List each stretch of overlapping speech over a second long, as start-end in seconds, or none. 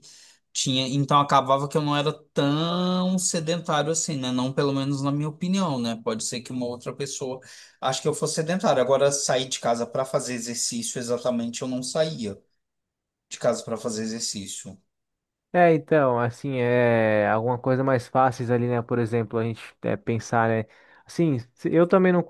none